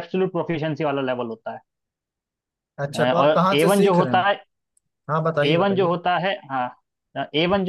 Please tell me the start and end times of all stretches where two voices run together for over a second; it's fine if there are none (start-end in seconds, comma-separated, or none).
2.9-4.2